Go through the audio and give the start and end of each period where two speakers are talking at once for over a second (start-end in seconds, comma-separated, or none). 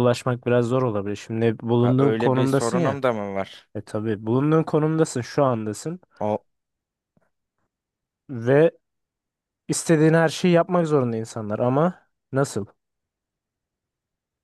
1.8-3.0